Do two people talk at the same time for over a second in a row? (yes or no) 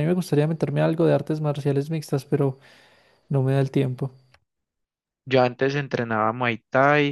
no